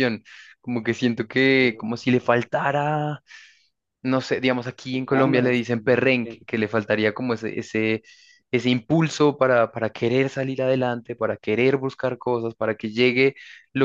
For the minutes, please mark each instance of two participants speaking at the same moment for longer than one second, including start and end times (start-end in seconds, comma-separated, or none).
4.9-6.4